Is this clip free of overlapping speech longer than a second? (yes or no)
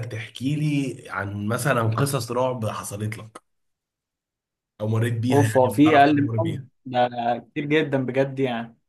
no